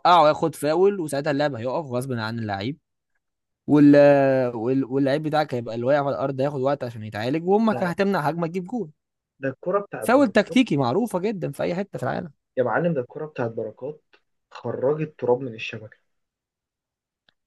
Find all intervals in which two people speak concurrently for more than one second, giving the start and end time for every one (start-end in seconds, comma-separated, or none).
none